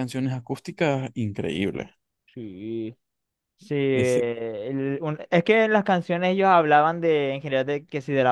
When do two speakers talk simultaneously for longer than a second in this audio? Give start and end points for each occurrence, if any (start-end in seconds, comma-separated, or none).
none